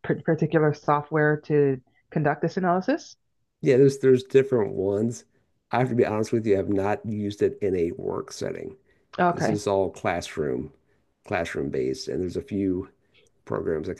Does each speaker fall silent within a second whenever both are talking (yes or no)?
yes